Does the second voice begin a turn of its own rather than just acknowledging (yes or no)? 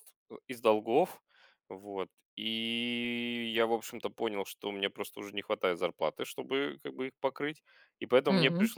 no